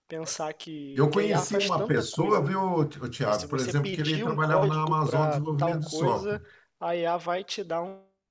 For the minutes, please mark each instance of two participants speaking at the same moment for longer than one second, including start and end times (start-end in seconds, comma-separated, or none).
0.9-2.5, 3.3-6.4